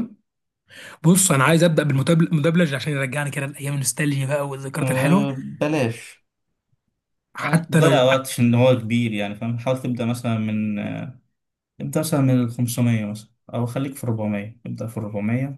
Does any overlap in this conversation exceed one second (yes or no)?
no